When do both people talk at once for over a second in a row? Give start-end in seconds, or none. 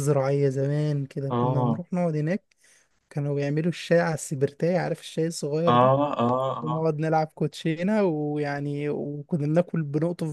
none